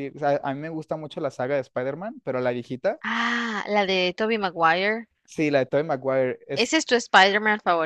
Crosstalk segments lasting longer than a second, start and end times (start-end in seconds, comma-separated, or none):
none